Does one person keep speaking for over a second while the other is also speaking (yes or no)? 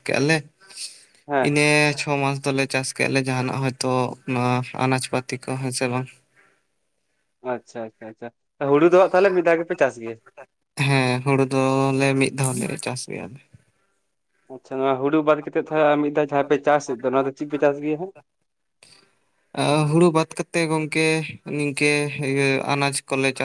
no